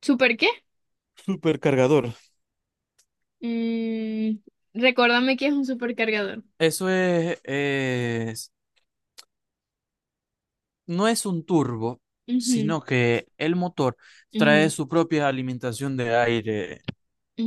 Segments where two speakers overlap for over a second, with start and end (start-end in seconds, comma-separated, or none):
none